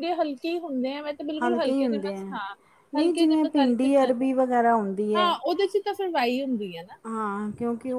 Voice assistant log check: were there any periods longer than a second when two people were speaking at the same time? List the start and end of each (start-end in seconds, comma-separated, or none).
3.0-4.3